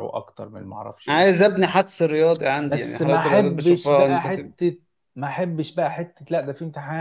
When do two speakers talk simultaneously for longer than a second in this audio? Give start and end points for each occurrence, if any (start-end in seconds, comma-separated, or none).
2.6-4.5